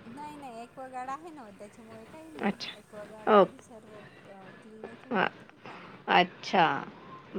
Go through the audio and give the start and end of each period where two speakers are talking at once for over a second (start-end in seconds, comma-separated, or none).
2.5-3.7